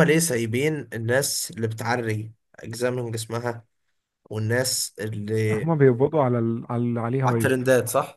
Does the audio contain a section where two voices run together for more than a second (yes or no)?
no